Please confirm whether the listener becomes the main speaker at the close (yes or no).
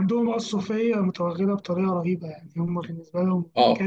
no